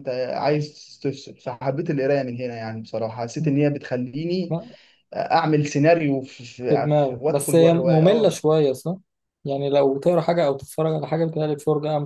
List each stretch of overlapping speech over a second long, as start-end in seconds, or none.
6.6-8.4